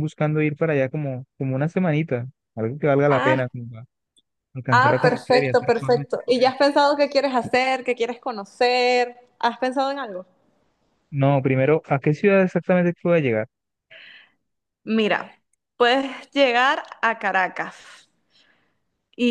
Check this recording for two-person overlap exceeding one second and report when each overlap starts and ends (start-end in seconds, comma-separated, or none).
4.7-6.5